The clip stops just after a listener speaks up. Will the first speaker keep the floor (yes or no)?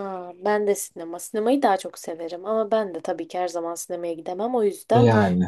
yes